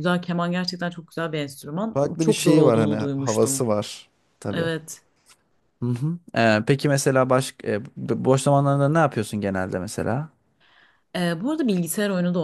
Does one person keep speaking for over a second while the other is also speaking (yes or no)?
yes